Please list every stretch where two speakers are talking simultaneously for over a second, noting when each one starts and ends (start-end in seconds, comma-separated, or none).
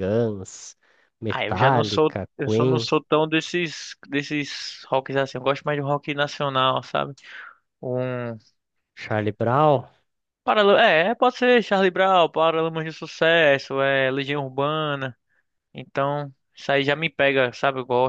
1.3-2.9